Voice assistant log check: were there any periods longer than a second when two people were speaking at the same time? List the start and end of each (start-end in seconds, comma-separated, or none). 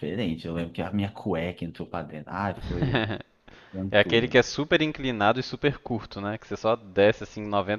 none